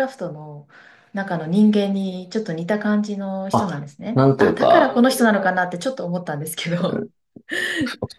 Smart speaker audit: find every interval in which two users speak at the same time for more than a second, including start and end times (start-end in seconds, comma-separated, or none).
3.5-5.1